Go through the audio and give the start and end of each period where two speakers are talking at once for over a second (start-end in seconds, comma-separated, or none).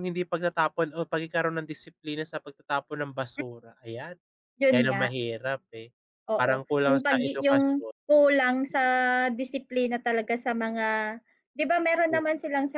6.4-7.9